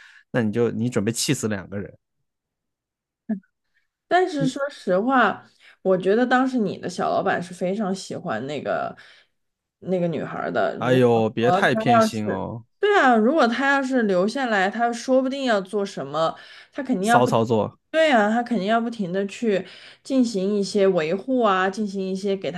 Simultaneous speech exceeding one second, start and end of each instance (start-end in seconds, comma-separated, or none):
10.8-12.6